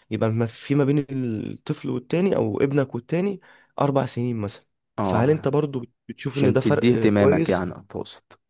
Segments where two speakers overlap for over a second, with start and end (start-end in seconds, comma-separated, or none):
6.3-7.6